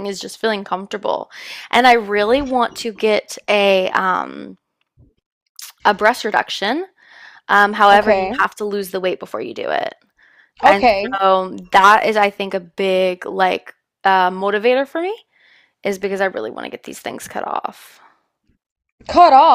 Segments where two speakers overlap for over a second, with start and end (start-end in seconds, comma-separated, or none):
none